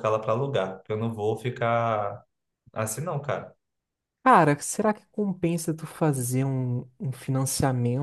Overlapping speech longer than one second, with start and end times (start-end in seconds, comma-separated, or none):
none